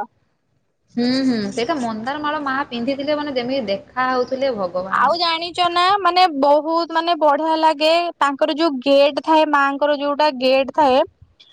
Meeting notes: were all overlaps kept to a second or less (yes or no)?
yes